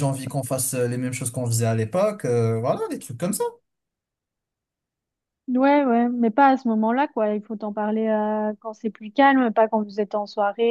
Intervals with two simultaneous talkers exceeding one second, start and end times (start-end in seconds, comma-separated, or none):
none